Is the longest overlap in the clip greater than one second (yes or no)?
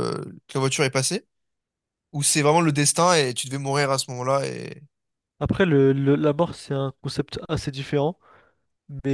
no